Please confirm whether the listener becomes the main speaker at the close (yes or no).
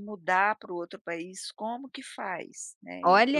yes